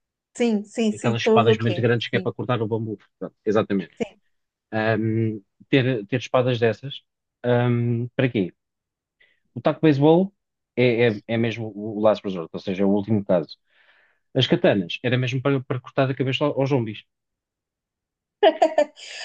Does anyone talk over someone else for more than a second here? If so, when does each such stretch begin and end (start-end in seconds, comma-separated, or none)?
0.9-2.3